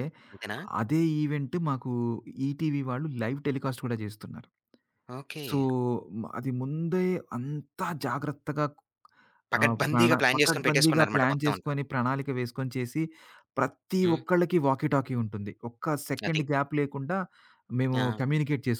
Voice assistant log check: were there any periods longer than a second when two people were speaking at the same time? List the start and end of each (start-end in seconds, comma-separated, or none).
9.6-11.7